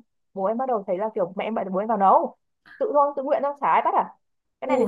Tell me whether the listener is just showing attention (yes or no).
no